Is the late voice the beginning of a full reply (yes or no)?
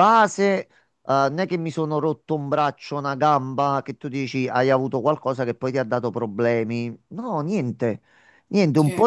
no